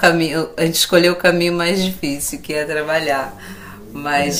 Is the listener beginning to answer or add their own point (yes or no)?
no